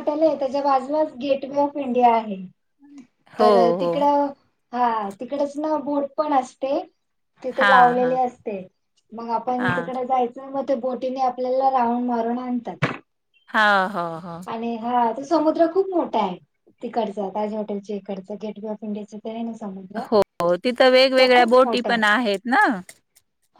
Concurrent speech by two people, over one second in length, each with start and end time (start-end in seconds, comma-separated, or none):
none